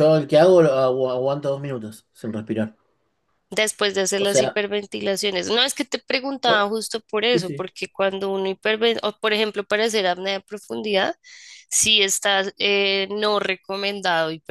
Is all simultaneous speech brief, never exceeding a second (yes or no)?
yes